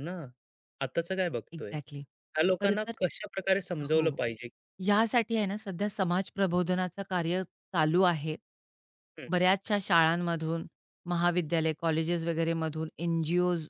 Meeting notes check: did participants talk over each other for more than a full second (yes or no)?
no